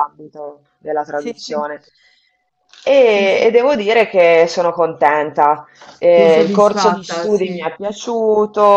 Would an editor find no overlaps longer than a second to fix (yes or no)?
no